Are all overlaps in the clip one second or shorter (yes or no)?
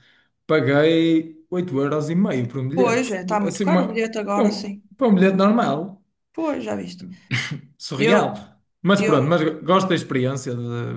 no